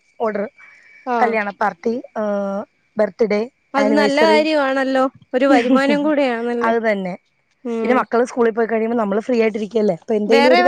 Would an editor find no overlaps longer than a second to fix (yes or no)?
yes